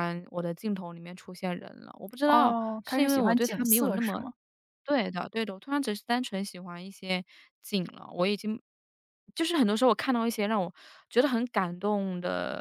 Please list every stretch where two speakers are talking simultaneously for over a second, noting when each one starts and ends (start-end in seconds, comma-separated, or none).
2.3-4.2